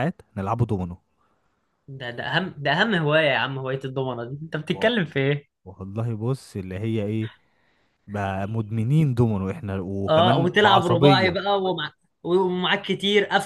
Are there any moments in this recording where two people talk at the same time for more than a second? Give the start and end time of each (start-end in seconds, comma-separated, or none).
10.1-11.4